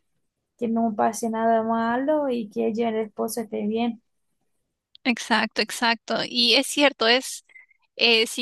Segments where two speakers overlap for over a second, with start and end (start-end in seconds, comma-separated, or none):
none